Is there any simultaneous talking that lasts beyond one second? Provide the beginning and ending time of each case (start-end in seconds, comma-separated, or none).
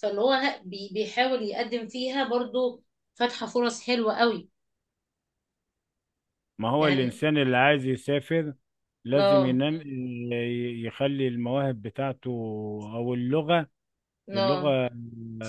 none